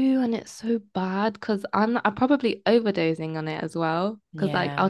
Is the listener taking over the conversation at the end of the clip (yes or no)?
no